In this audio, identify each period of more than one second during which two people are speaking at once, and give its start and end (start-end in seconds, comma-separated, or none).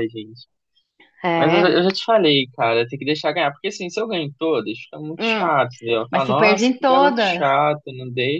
6.1-7.5